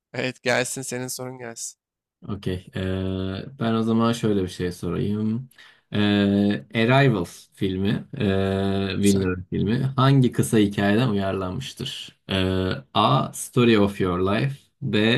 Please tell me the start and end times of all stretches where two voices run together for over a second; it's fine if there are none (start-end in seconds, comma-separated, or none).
none